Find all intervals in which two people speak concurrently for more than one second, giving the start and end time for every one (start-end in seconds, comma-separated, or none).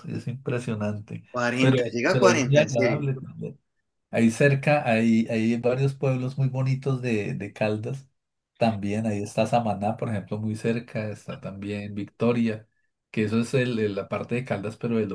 1.3-3.1